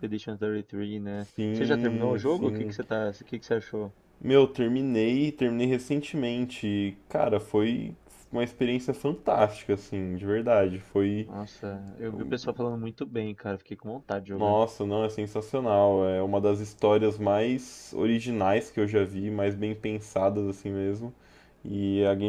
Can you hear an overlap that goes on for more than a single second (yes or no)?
yes